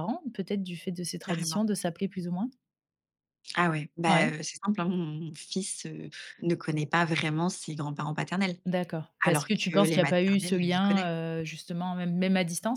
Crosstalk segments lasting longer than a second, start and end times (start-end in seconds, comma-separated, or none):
9.2-11.1